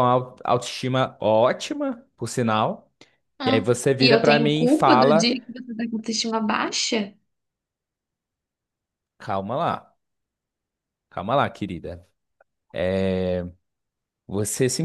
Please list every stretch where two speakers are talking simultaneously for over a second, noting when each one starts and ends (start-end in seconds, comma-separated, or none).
3.4-5.3